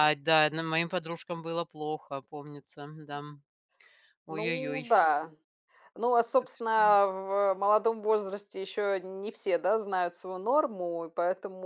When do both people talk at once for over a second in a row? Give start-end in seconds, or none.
none